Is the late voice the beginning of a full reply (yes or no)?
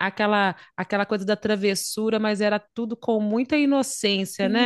yes